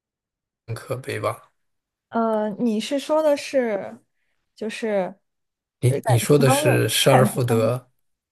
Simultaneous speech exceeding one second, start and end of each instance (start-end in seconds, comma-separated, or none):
6.4-7.8